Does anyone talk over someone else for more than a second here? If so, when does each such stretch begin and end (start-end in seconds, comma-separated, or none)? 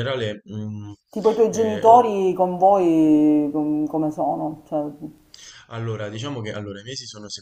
none